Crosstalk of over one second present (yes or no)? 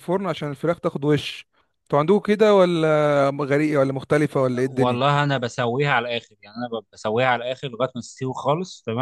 no